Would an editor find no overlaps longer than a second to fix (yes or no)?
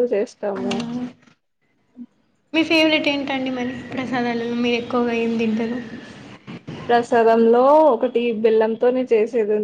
yes